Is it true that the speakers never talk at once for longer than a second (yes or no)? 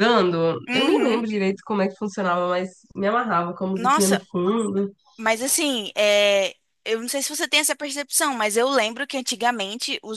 yes